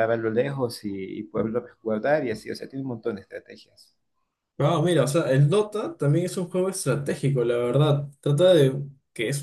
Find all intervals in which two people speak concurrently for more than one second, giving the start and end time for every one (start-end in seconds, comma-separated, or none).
none